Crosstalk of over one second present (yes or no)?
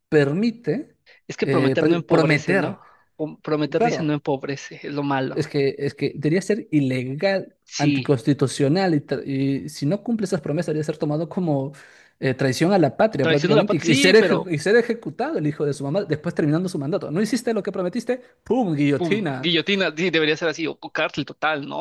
yes